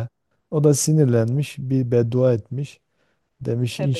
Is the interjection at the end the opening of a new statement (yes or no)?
no